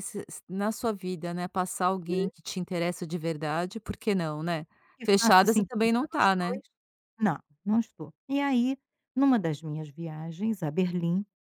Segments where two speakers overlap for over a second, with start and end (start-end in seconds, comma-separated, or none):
5.0-6.6